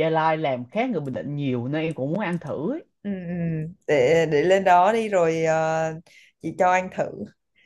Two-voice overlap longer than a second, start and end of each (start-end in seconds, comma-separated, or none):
none